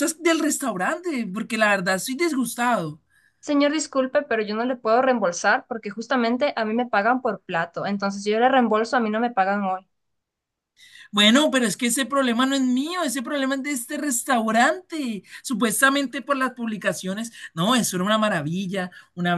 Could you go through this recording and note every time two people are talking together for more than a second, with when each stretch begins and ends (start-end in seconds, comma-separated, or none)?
none